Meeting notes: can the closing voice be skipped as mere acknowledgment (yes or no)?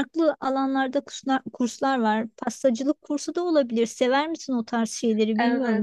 no